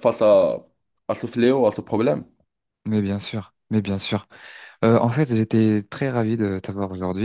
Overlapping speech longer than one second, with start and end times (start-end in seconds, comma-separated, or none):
none